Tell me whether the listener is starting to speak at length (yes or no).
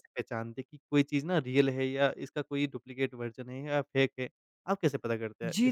yes